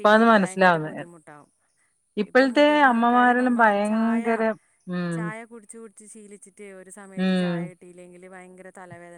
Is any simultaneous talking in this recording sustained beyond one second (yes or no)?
yes